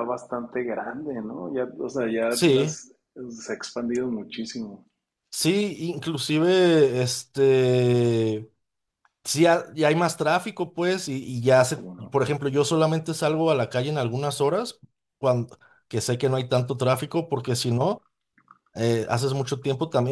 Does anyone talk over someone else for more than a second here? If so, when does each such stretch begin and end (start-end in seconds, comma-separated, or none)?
none